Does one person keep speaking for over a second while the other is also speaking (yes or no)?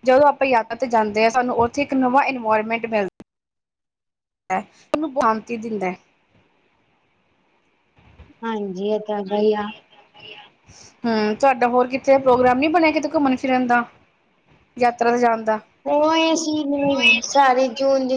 no